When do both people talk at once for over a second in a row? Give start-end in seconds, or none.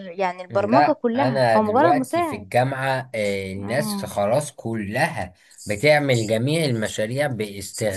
0.5-2.5